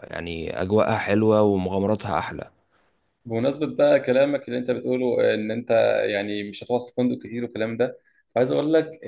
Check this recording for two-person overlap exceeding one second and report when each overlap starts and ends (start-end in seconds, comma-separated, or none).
none